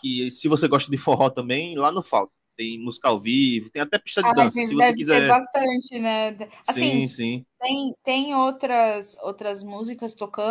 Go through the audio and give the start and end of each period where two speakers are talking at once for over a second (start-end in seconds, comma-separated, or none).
4.2-5.4